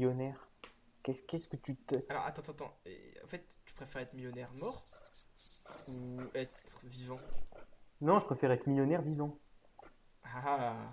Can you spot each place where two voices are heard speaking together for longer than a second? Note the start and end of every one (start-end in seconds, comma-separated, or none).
none